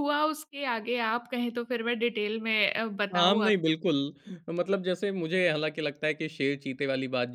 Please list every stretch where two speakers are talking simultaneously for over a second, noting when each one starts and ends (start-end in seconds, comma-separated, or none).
none